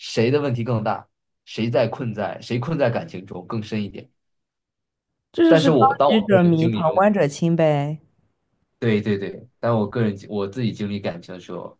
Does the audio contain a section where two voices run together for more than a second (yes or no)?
yes